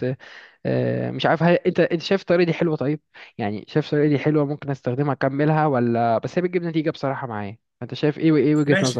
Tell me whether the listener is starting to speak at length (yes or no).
yes